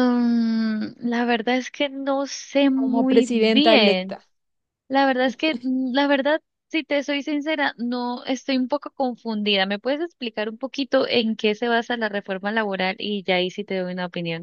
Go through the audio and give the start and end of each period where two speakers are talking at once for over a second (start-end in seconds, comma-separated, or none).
2.7-4.2